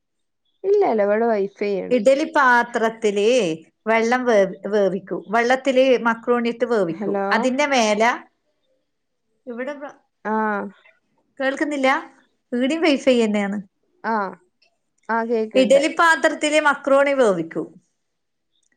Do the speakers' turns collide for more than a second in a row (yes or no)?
no